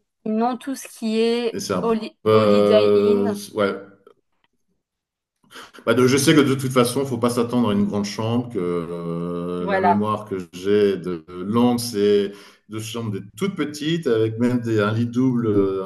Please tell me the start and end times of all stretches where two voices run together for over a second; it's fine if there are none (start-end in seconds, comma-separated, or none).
1.5-3.4